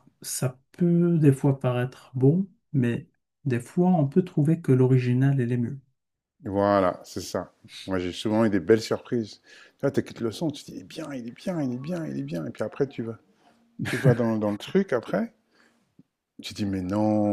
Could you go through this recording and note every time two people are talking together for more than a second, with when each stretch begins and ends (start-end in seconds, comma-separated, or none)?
none